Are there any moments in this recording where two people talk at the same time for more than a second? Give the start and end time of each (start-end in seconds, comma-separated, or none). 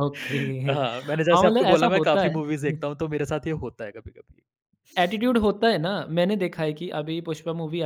0.7-2.8